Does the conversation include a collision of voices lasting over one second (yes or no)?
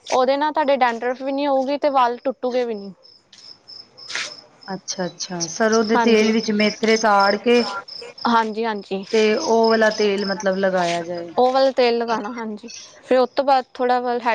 no